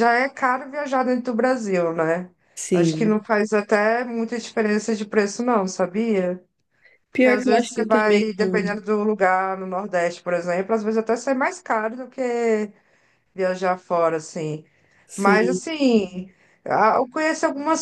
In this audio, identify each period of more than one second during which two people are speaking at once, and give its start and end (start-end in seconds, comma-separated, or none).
7.1-8.8